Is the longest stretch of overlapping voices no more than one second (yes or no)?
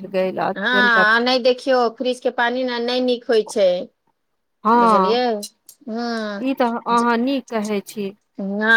yes